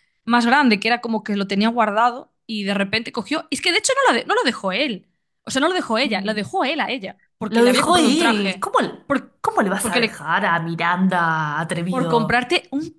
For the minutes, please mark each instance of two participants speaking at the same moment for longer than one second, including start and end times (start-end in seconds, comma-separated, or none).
7.5-8.7